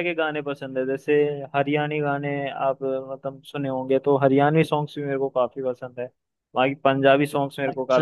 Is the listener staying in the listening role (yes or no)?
yes